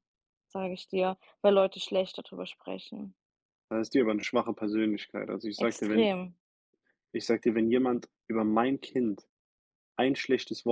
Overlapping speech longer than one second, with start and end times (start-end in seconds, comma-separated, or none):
none